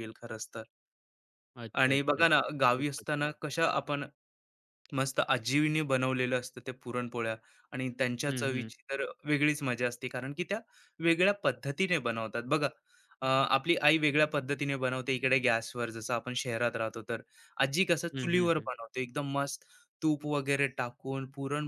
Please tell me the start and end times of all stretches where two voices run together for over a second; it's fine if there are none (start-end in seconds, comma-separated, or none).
1.8-3.4